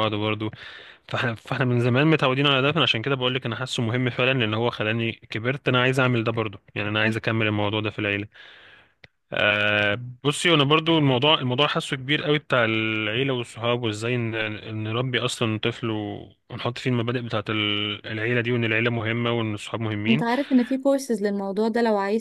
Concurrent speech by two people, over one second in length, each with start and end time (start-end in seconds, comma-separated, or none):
none